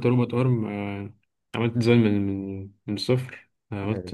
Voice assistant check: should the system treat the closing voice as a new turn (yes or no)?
no